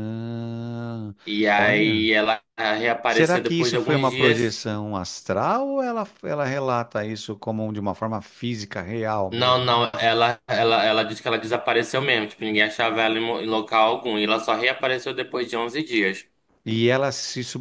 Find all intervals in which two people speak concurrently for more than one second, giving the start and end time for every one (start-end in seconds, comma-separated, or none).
3.1-4.7